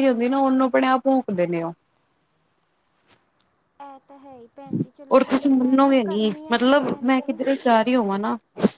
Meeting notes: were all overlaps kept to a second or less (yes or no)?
no